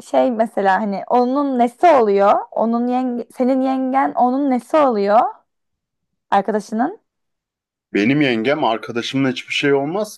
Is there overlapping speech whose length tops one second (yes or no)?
no